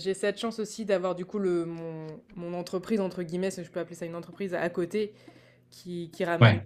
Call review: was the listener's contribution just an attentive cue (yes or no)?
yes